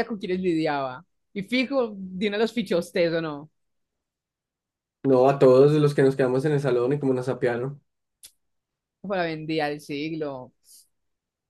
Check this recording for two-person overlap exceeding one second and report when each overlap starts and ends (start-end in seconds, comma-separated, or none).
none